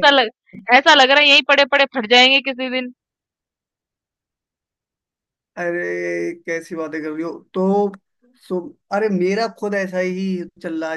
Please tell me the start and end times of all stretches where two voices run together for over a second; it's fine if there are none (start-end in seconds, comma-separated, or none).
none